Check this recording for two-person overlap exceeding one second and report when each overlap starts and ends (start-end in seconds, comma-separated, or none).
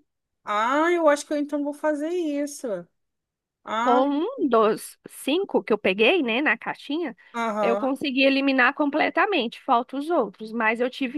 none